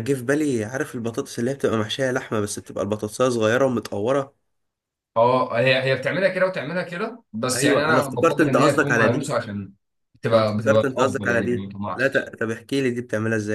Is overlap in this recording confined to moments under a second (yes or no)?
no